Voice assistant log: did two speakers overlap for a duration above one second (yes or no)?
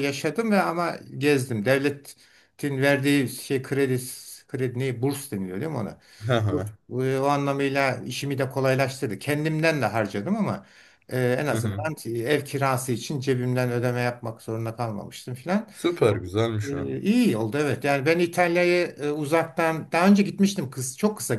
no